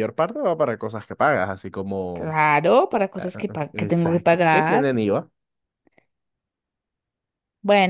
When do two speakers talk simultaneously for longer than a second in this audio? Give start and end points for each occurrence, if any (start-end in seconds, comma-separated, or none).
3.2-4.8